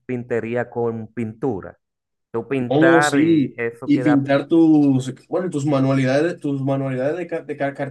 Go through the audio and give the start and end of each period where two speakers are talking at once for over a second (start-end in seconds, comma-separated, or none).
2.7-4.3